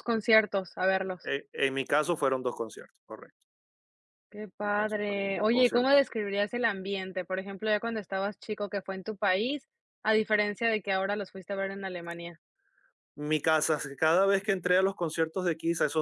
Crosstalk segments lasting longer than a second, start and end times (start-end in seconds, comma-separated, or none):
4.6-6.0